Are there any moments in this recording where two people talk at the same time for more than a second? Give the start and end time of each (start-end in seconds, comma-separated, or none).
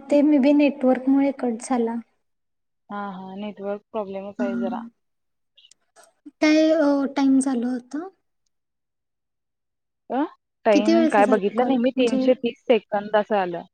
10.7-12.2